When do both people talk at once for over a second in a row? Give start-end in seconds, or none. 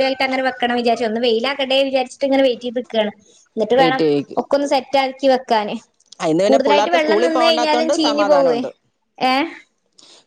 6.5-8.6